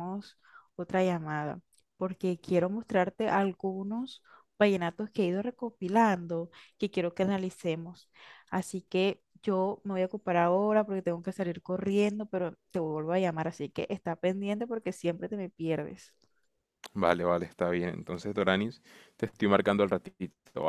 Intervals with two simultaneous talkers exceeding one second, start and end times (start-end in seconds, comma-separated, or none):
none